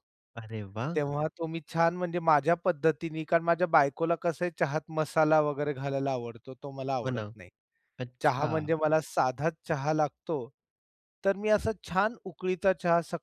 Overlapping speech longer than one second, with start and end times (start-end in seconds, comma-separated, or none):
none